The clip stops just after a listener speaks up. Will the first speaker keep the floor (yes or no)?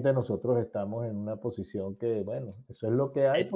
yes